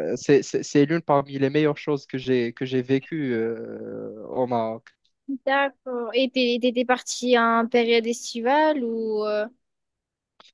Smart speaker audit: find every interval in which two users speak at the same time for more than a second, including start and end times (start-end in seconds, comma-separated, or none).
none